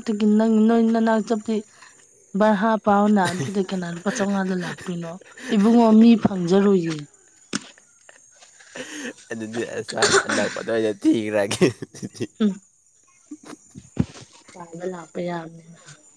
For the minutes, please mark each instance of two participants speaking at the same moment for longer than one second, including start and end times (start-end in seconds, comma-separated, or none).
none